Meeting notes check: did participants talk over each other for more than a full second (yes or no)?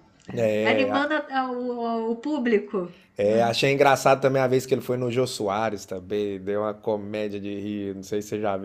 no